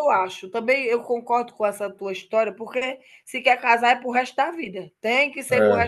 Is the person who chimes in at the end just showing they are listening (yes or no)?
no